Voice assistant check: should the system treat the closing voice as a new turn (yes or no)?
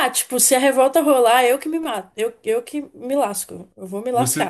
yes